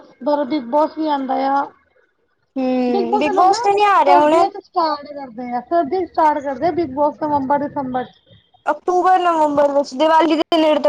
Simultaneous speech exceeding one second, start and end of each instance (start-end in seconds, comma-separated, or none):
2.9-4.5